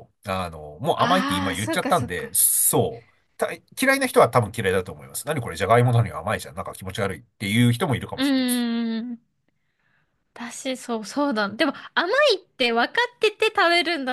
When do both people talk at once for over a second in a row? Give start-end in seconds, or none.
0.9-2.3